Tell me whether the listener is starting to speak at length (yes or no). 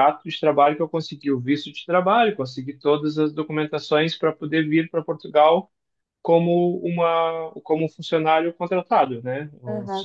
yes